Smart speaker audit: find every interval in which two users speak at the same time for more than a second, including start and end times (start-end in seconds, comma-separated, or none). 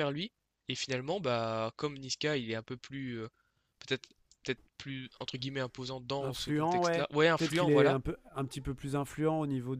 6.2-8.0